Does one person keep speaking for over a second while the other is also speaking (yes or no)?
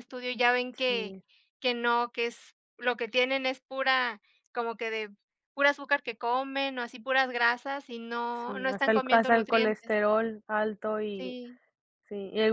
yes